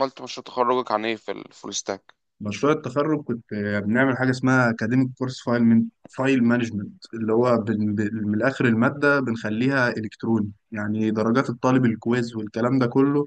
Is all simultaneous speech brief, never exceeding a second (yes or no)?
yes